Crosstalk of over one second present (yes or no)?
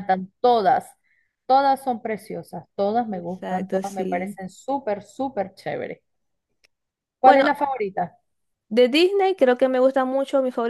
yes